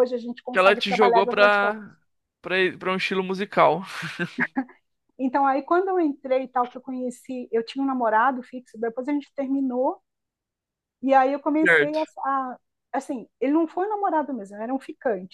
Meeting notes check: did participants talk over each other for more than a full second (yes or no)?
yes